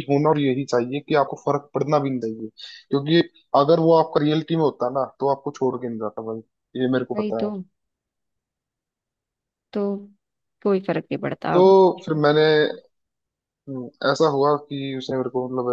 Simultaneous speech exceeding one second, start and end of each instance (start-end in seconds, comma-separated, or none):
none